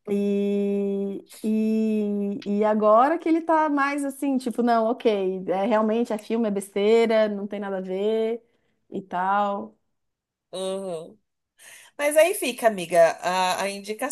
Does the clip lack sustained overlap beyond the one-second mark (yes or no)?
yes